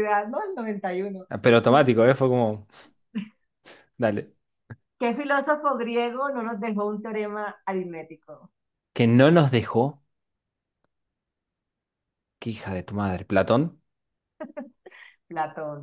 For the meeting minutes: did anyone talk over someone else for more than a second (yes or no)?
no